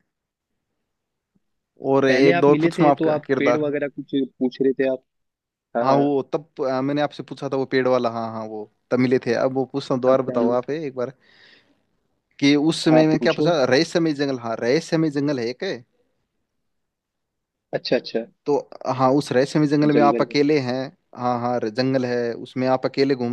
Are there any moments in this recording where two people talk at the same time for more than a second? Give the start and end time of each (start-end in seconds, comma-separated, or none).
2.1-3.7